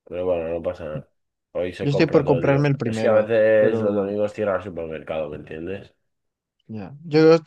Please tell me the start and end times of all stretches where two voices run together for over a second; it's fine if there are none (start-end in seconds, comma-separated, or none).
1.8-4.1